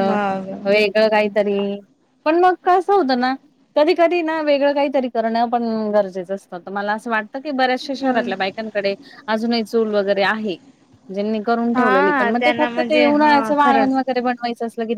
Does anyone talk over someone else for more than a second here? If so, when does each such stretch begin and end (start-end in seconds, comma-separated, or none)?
11.7-14.0